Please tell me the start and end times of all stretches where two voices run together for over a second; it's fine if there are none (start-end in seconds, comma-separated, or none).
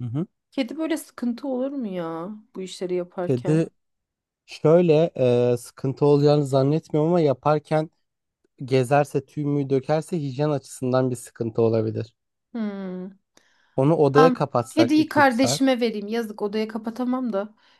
14.1-15.6